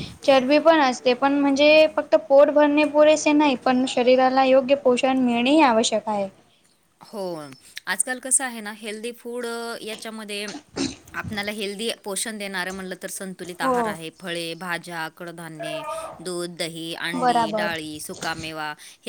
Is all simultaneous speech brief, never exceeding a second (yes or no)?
yes